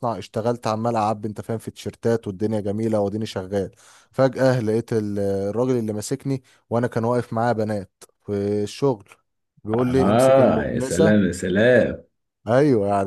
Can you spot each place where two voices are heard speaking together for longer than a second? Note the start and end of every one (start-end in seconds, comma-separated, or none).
9.7-11.2